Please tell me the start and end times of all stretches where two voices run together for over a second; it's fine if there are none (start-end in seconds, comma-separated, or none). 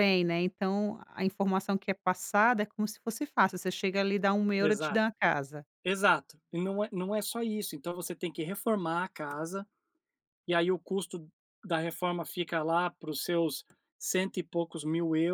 none